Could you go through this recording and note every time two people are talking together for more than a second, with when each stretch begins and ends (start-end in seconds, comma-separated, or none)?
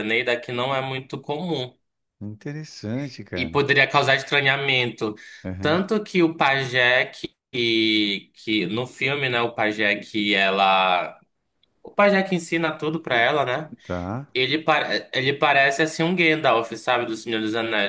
none